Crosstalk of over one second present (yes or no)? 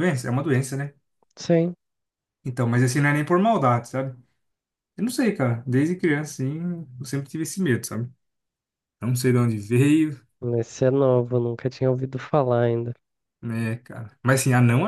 no